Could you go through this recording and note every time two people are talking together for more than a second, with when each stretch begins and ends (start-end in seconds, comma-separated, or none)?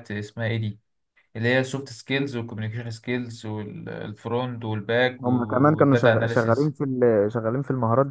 5.2-6.7